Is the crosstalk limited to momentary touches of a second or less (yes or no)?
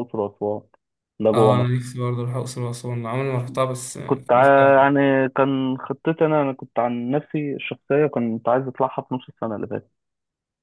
yes